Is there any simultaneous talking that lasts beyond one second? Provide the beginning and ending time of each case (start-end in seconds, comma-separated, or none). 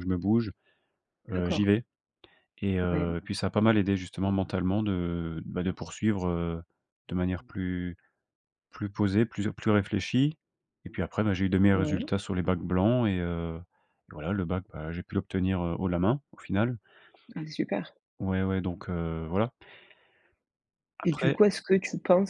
none